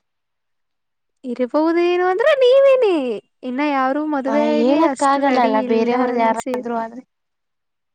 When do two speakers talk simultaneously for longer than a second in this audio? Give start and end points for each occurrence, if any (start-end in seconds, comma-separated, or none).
4.6-6.7